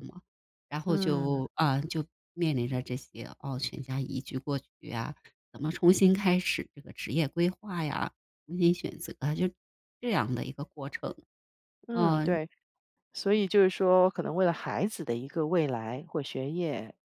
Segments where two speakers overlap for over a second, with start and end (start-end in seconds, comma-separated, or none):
none